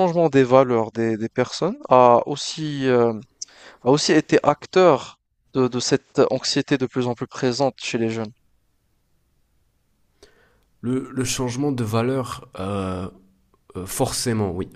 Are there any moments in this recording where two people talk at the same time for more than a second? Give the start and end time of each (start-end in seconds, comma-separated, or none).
none